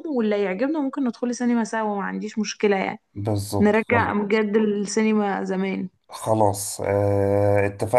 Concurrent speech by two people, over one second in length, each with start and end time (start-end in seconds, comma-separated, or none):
none